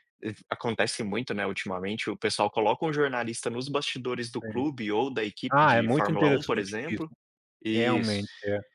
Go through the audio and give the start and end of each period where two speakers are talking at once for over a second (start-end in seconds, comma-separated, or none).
5.5-7.1